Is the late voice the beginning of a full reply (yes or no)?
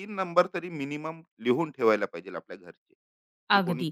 yes